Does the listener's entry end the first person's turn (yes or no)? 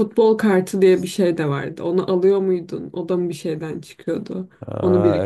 yes